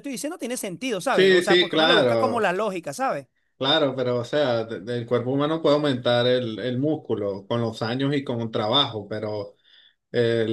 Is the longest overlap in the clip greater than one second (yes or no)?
yes